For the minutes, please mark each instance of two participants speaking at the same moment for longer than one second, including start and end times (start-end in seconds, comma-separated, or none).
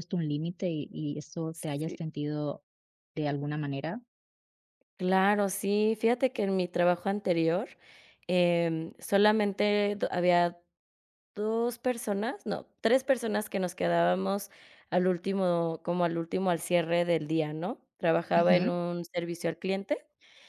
none